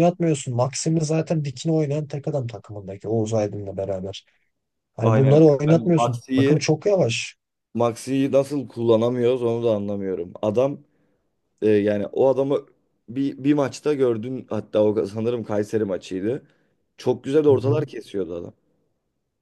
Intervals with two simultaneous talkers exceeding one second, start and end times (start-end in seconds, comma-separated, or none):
5.0-6.7